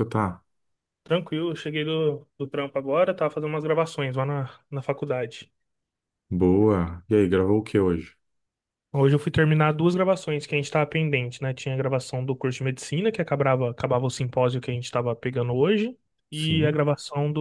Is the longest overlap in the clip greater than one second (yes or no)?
no